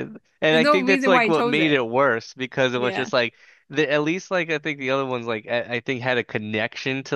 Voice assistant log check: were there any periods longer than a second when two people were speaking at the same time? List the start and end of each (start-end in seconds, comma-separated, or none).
0.5-1.8